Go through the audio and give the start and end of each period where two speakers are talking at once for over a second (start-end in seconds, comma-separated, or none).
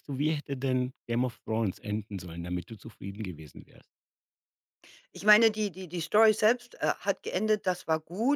none